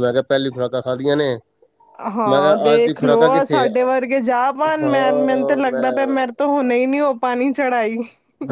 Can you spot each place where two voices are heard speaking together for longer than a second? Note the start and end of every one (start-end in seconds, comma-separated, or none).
2.3-3.6